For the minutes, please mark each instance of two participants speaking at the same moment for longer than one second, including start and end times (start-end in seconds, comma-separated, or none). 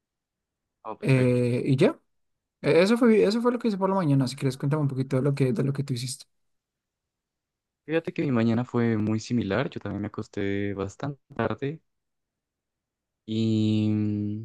none